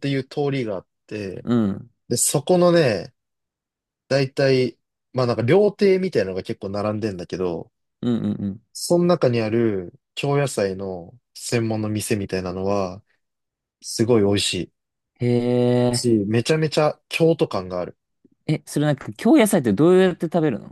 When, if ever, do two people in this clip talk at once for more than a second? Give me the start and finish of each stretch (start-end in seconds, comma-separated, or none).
none